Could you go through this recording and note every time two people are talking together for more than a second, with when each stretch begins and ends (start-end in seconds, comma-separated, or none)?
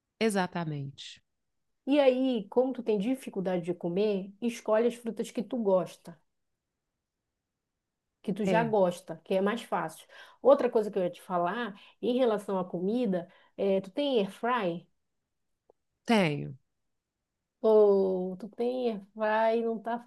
none